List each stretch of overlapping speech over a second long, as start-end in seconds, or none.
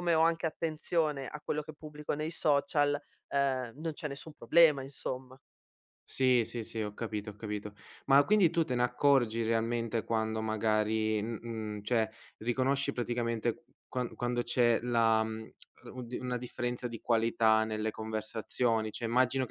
none